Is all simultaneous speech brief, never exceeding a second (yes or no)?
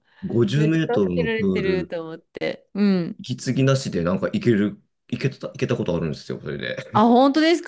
no